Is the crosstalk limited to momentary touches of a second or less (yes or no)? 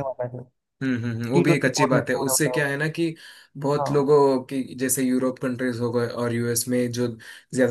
no